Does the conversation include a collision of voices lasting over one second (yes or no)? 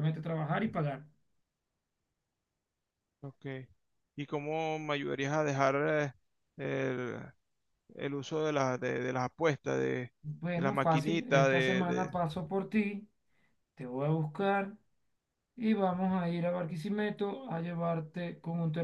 yes